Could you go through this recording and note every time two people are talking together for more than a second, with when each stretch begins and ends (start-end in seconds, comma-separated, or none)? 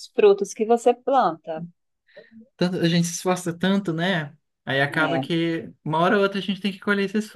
none